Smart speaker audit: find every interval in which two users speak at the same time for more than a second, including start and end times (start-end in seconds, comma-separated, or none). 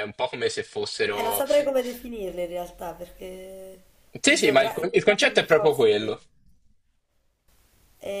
4.2-6.2